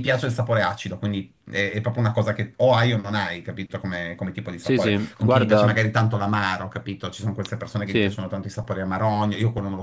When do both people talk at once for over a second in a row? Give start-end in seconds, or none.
4.6-5.8